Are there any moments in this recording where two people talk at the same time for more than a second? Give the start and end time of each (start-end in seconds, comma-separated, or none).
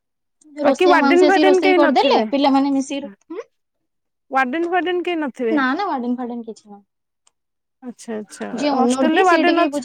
0.7-2.2